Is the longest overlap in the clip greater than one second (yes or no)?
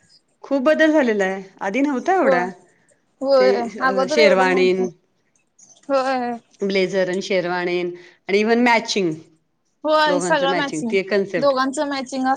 yes